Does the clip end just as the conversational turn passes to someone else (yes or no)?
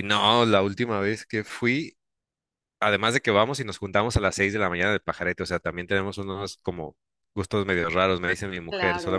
no